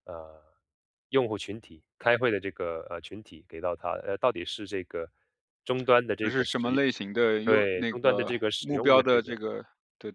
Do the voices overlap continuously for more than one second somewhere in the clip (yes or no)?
yes